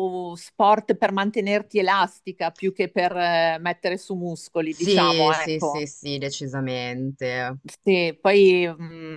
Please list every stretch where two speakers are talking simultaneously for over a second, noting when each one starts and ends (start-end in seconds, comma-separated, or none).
4.7-5.9